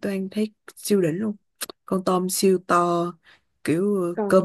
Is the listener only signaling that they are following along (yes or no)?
yes